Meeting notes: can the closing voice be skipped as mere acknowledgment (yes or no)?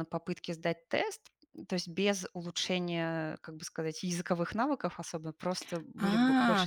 no